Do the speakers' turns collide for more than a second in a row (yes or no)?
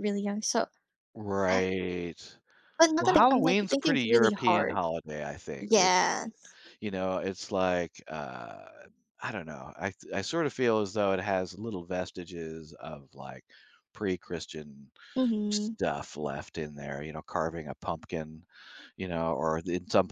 yes